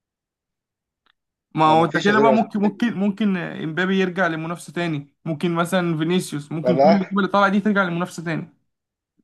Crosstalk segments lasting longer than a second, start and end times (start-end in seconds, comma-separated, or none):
1.6-2.9